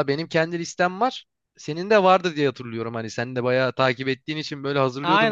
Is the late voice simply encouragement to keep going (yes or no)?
no